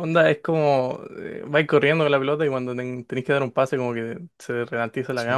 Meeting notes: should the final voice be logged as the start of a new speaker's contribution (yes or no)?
yes